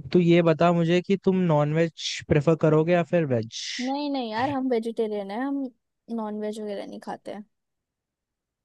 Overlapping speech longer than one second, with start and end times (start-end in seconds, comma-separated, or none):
none